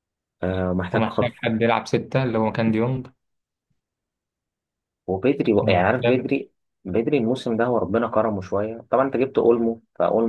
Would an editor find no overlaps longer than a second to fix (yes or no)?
yes